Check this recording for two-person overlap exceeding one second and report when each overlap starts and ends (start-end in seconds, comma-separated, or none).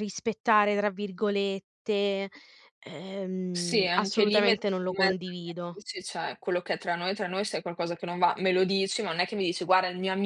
3.5-5.8